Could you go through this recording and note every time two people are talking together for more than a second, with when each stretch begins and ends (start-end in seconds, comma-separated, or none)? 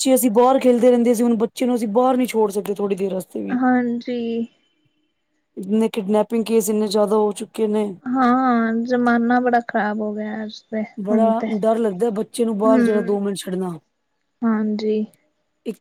none